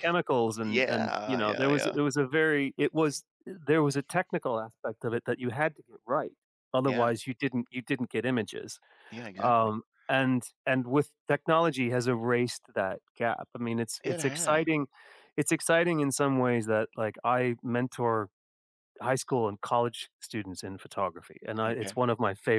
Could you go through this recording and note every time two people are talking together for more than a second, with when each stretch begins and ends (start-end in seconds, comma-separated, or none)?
0.6-1.9